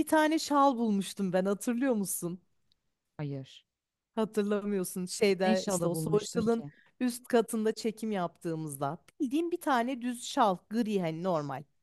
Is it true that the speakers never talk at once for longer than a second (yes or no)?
no